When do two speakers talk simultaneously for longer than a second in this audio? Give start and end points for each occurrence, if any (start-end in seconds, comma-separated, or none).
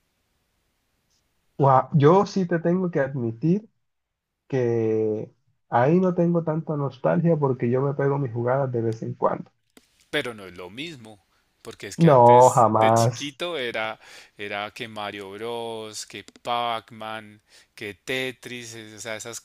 12.1-13.4